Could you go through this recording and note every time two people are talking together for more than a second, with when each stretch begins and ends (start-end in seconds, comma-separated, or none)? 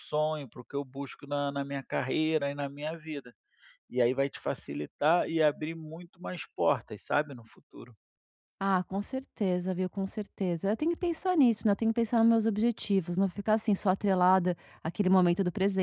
none